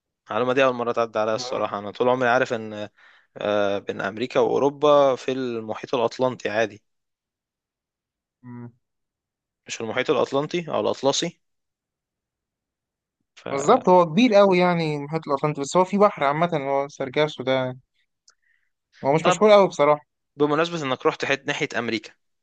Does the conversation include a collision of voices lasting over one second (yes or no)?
no